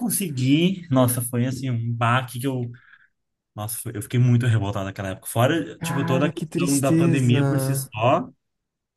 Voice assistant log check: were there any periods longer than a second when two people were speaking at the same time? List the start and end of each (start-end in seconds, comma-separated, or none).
5.8-7.9